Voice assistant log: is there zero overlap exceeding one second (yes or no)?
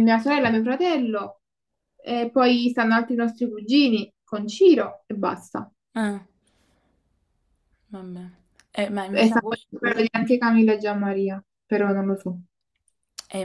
yes